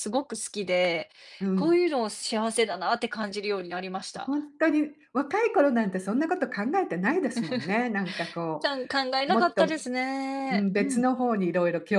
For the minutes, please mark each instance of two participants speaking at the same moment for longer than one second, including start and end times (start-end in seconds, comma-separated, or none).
none